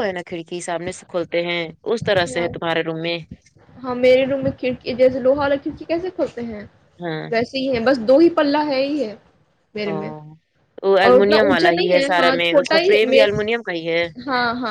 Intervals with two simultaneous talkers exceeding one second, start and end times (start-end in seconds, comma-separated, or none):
11.0-13.2